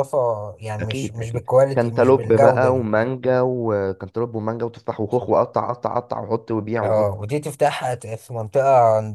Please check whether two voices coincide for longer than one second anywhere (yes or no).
yes